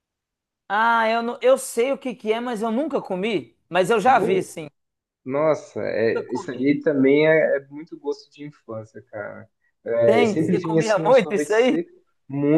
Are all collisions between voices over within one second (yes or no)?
no